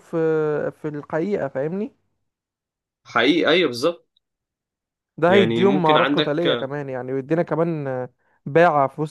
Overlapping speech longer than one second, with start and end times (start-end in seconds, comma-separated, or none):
5.3-6.7